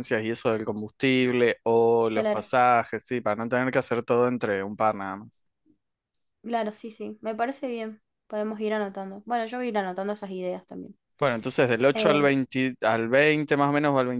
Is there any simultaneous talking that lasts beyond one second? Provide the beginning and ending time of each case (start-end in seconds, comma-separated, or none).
none